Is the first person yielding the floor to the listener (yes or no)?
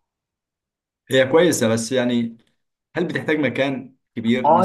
yes